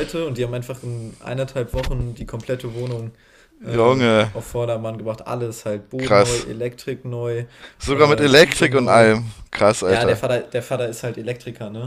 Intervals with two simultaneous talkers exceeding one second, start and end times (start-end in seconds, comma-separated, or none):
7.9-9.1